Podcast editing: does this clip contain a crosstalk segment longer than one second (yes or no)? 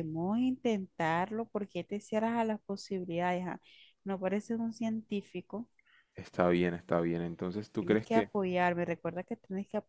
no